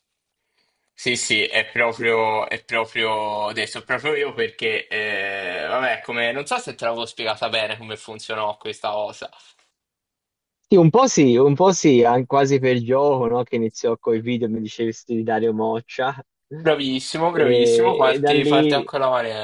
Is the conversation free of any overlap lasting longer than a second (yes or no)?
no